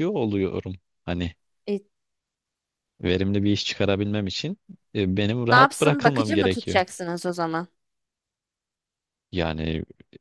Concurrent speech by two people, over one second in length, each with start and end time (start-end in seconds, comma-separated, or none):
5.5-6.8